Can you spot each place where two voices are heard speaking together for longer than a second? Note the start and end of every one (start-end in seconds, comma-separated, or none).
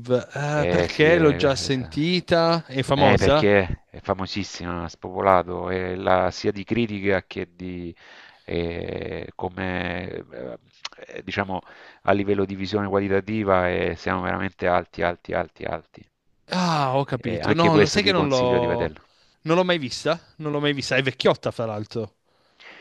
0.5-2.0, 17.2-19.0